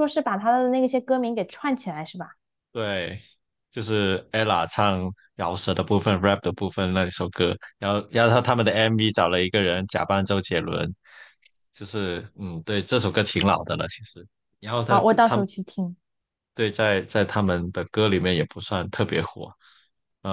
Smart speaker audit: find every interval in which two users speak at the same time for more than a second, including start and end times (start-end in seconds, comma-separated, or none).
none